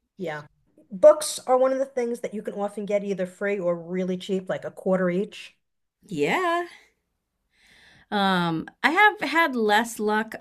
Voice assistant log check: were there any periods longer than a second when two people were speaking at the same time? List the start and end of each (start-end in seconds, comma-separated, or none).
none